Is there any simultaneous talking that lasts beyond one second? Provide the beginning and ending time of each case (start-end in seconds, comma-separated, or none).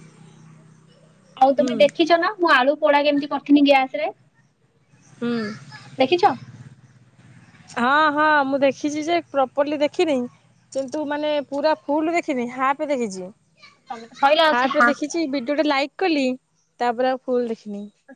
none